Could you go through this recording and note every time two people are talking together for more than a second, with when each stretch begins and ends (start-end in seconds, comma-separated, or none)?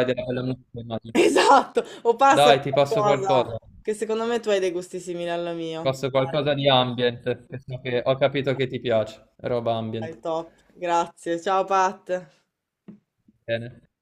2.2-3.8